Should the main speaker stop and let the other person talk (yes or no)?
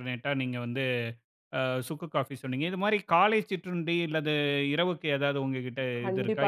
yes